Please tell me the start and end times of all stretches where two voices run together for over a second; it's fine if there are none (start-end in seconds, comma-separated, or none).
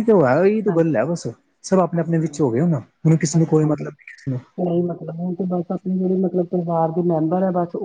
none